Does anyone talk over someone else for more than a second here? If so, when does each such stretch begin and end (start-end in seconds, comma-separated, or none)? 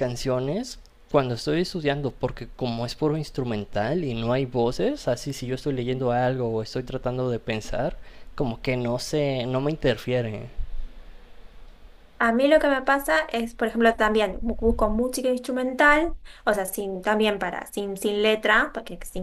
none